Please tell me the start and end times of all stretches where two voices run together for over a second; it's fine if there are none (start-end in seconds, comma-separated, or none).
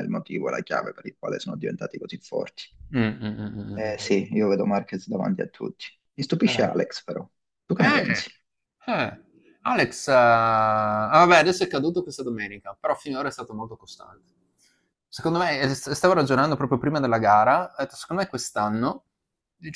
none